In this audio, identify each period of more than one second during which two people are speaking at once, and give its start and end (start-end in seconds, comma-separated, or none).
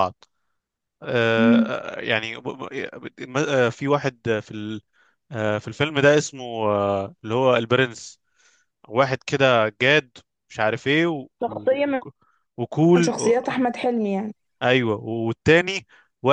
none